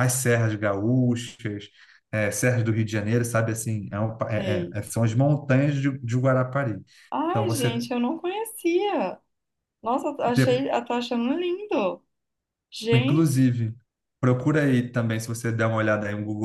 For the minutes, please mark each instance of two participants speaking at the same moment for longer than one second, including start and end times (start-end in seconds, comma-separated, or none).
none